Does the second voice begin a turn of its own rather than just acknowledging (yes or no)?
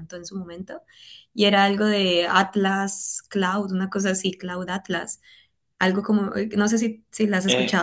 yes